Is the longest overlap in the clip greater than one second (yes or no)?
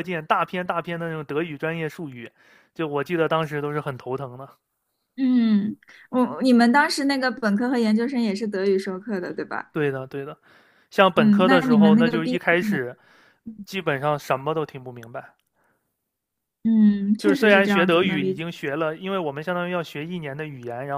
yes